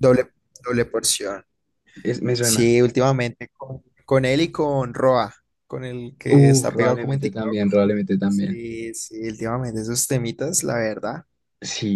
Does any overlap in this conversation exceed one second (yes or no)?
yes